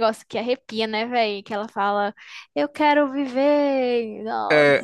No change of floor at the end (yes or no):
no